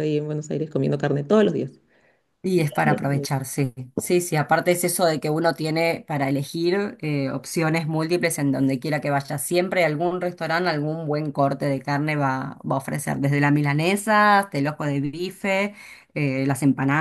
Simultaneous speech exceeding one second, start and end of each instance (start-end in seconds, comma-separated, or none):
none